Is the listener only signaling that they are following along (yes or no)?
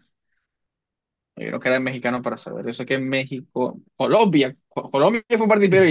no